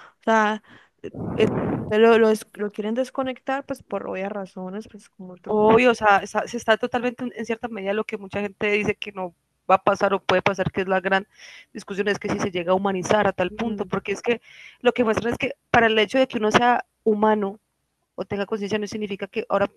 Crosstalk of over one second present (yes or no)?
no